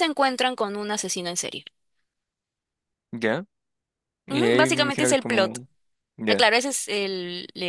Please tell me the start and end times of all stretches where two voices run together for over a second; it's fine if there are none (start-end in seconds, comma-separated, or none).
4.3-5.6